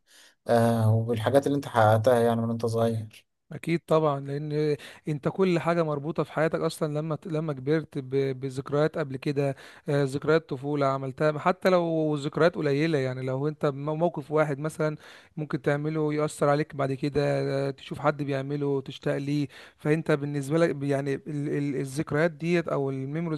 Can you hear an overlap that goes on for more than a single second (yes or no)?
no